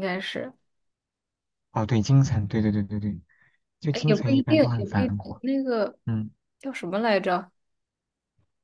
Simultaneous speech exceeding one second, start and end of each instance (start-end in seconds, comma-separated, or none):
3.9-5.4